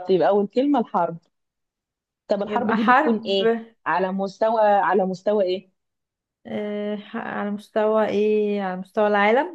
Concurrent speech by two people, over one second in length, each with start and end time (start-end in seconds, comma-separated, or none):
2.4-3.6